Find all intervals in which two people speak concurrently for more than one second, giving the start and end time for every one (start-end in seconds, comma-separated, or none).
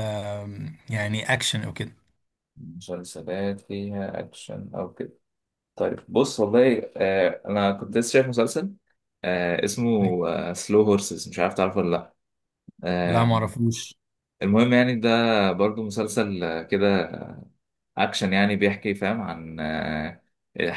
none